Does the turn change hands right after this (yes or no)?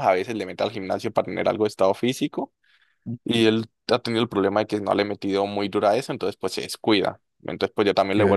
no